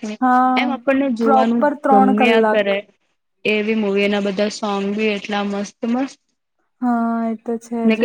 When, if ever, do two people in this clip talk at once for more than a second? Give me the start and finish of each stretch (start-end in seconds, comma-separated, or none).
0.6-2.6